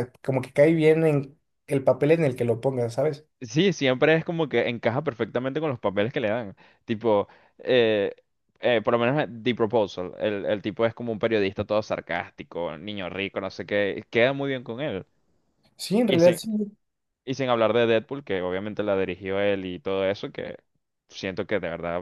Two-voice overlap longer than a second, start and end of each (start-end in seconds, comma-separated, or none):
none